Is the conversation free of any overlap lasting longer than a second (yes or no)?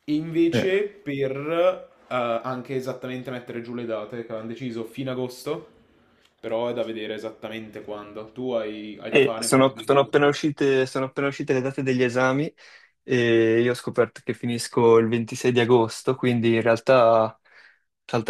no